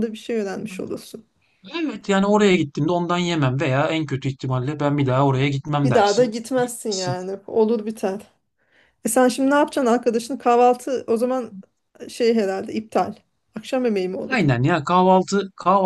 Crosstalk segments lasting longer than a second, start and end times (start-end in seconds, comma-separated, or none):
5.8-7.2